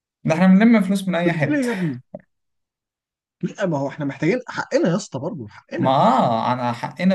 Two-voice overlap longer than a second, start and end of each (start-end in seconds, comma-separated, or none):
none